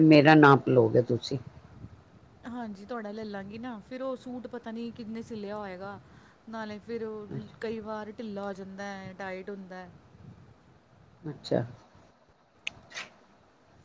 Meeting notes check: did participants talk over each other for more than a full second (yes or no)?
no